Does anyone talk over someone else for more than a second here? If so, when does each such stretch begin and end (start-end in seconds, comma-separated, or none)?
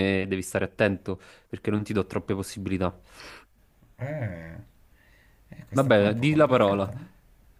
5.7-6.9